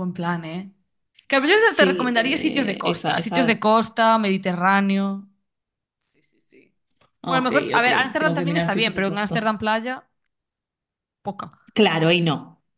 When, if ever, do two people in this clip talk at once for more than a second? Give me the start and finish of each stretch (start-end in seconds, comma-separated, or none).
1.6-3.6, 7.3-9.5